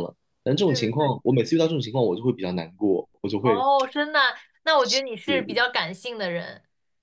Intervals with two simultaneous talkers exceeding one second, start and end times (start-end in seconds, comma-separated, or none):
none